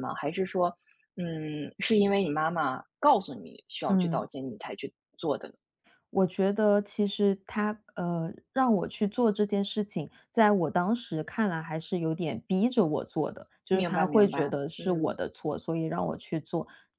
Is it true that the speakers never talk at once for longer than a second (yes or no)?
no